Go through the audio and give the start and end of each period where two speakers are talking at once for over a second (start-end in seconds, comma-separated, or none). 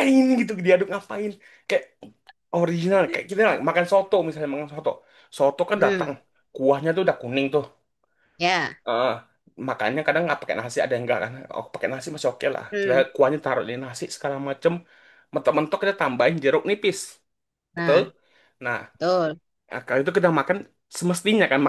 none